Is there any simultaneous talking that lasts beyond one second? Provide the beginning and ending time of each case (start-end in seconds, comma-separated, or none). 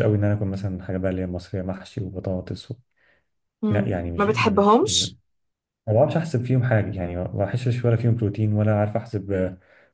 3.7-5.0